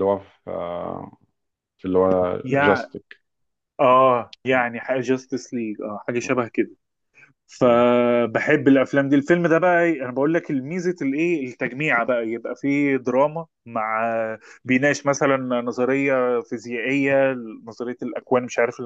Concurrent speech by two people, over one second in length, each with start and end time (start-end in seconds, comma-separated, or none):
none